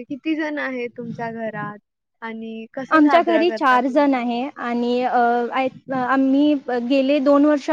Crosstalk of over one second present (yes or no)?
yes